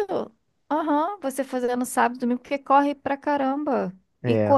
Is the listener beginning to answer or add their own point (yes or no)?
no